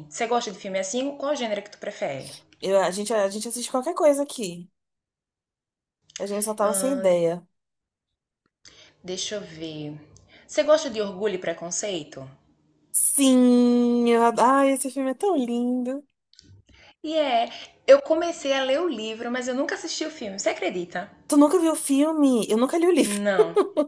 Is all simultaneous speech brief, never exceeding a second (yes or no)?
yes